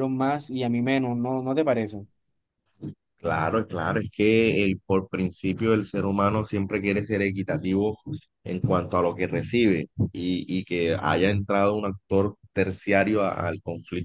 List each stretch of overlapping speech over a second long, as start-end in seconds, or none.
none